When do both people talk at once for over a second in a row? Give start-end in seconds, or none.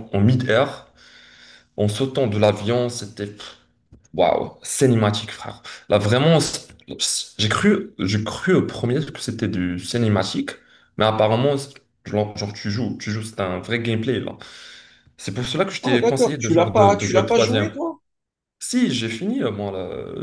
15.8-17.8